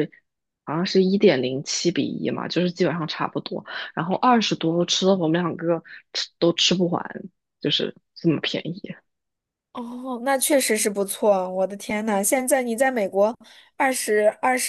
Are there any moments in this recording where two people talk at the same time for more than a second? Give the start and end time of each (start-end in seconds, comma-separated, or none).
none